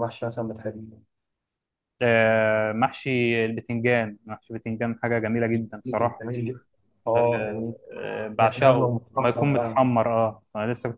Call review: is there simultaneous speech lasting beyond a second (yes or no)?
yes